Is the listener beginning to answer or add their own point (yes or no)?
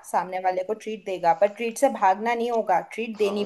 yes